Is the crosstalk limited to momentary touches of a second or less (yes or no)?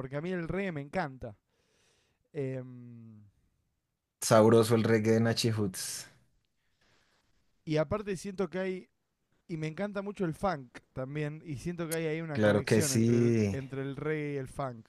no